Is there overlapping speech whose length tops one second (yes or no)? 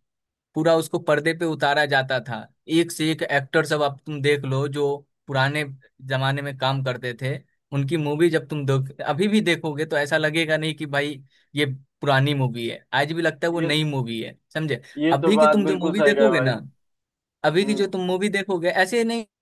yes